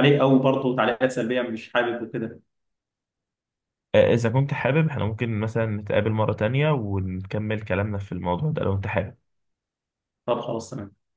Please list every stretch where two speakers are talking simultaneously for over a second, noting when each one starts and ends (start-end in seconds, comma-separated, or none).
none